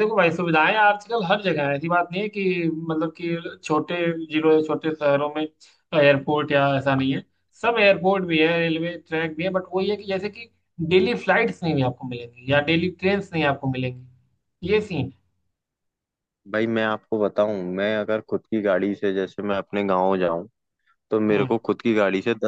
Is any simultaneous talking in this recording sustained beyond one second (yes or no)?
no